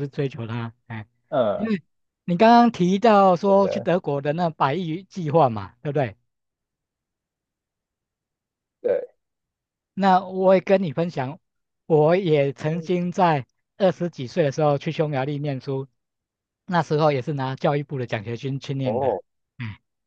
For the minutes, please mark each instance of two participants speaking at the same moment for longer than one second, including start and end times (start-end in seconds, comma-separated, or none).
none